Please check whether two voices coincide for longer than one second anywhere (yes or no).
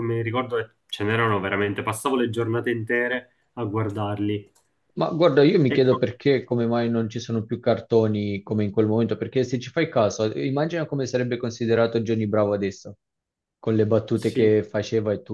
no